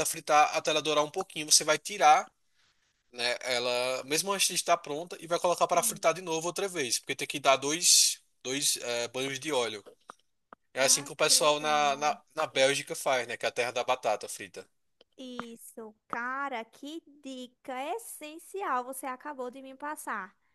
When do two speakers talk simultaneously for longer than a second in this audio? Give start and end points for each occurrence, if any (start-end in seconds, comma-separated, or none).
10.8-12.2